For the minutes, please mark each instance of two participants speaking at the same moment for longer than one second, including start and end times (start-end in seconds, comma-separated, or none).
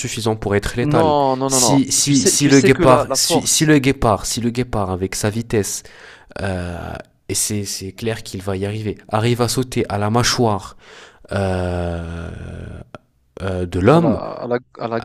0.8-3.7